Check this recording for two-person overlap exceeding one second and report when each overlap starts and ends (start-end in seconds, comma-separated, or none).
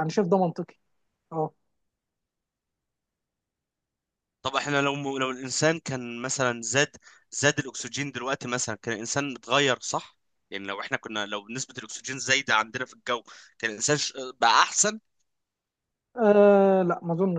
none